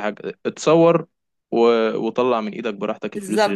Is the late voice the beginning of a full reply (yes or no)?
yes